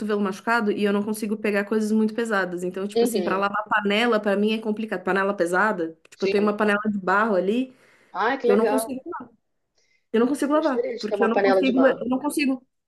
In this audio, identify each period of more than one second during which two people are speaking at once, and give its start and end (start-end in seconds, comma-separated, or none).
10.5-12.0